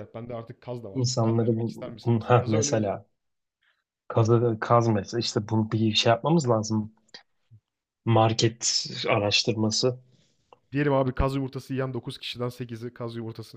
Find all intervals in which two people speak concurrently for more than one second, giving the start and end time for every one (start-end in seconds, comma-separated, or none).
0.9-3.0